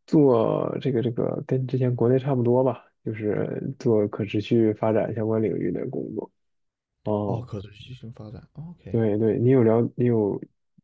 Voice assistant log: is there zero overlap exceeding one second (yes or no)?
yes